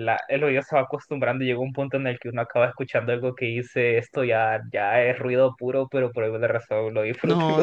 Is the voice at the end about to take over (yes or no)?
yes